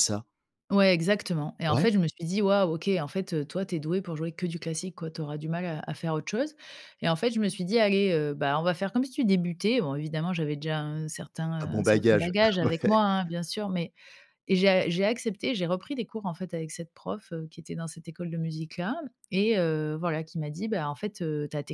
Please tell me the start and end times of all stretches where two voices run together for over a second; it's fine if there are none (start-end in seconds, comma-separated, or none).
11.6-13.0